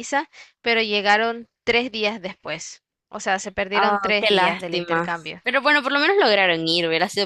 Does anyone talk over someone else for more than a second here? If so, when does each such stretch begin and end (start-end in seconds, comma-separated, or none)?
3.7-5.4